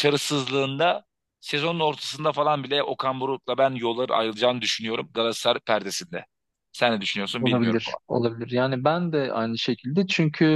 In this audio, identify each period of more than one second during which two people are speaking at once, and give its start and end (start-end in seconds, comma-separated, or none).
none